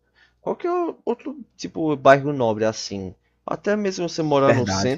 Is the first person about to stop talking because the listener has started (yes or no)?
no